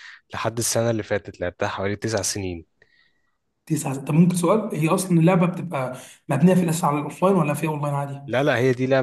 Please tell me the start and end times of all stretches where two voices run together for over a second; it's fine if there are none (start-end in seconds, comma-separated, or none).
none